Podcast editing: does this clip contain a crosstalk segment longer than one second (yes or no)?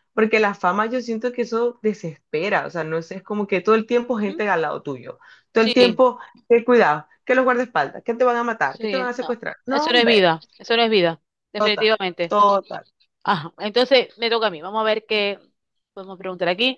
yes